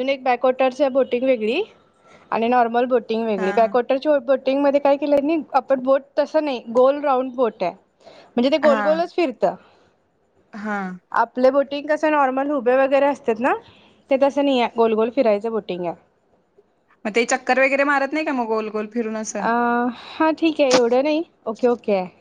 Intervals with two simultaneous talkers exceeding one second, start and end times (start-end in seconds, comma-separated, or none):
none